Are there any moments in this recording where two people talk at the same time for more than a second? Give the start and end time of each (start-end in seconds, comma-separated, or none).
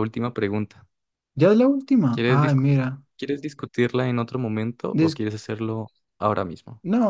none